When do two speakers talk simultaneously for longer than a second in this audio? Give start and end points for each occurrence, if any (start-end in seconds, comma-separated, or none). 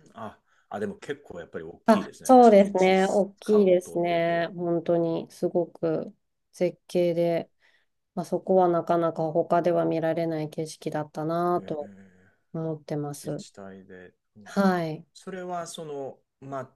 1.9-4.5